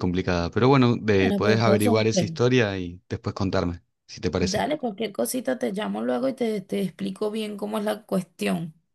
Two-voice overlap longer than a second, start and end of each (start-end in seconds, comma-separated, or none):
1.2-2.4